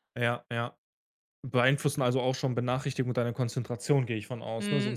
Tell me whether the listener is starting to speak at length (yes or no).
yes